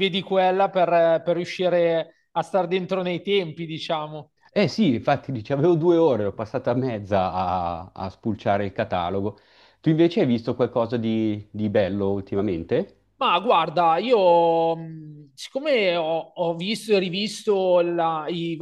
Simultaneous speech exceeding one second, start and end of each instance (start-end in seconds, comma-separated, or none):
none